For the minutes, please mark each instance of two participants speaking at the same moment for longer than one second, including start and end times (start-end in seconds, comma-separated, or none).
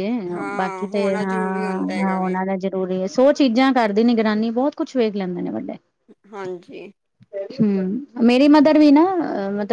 0.6-2.4